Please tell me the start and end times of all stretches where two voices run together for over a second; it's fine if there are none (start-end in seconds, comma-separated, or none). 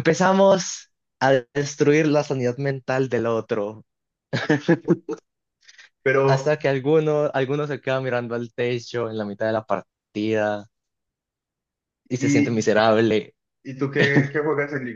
none